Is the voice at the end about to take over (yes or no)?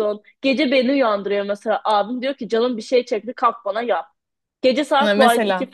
no